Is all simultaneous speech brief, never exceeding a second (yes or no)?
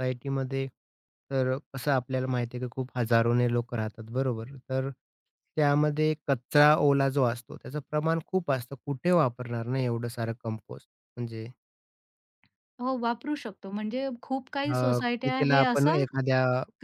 no